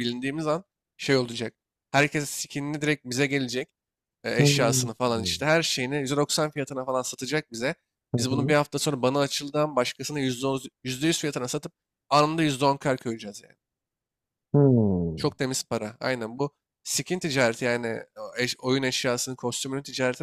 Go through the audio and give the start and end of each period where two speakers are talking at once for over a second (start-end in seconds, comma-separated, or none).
none